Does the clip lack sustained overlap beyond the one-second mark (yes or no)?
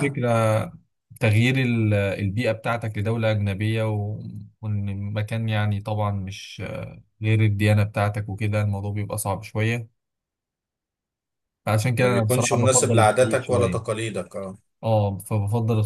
no